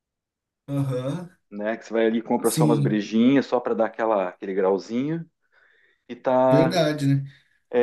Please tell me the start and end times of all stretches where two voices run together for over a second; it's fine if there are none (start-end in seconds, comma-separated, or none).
none